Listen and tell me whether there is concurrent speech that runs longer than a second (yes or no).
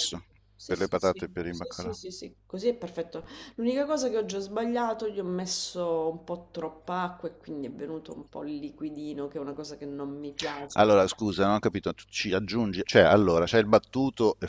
yes